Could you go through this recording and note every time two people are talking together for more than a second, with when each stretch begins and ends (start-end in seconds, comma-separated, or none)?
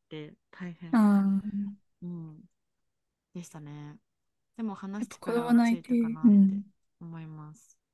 5.0-6.6